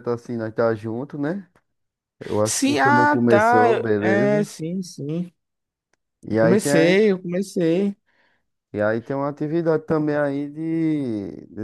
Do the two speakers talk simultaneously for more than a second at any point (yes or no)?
yes